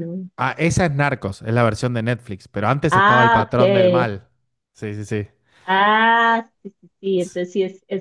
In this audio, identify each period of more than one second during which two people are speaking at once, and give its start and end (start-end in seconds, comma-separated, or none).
2.9-4.1